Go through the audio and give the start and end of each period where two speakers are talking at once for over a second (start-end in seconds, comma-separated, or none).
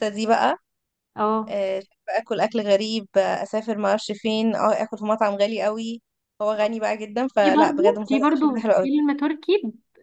7.4-8.9